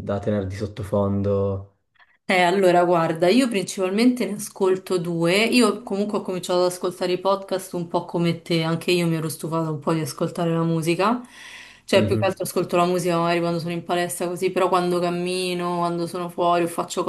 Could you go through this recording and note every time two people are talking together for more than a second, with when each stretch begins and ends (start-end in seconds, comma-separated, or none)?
none